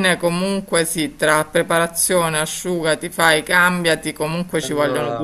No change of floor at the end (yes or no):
yes